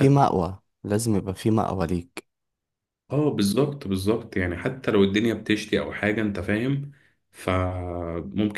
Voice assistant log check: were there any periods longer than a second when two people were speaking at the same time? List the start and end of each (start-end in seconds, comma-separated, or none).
none